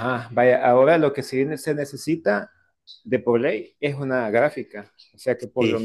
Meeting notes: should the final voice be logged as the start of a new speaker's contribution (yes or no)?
no